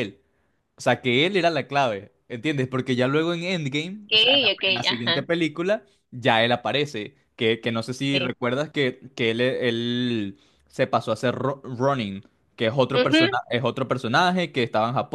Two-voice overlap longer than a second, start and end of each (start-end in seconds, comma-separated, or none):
4.1-5.3